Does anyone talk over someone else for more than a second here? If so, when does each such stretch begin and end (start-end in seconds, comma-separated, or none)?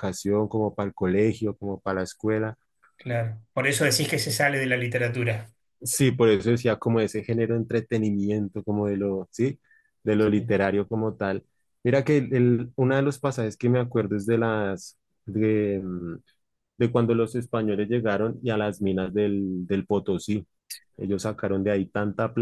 none